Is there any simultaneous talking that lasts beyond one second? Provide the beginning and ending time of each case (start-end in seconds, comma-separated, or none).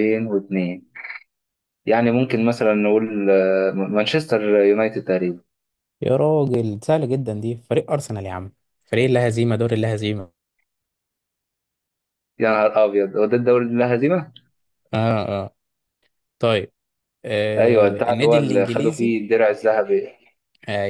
17.6-19.1